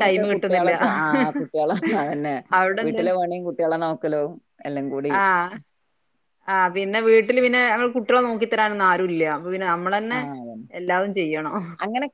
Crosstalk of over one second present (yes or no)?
no